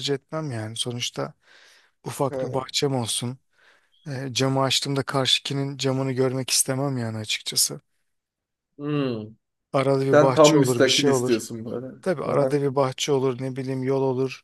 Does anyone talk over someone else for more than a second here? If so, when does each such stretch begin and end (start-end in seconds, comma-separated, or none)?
10.1-11.4